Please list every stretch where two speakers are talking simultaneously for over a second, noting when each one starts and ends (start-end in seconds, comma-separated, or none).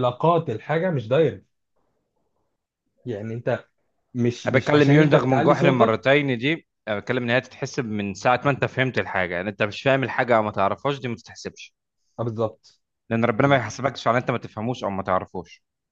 4.5-6.0